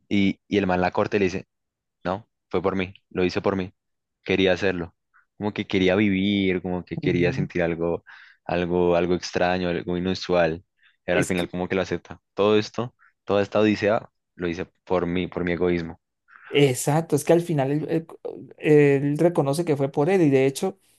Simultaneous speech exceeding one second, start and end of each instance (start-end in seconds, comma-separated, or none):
none